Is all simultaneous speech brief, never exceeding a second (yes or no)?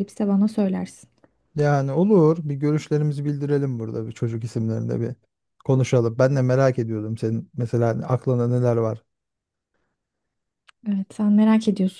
yes